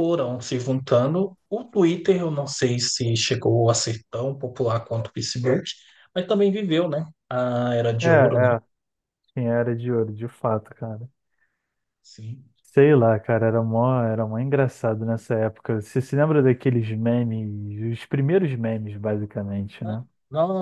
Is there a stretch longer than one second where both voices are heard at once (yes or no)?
no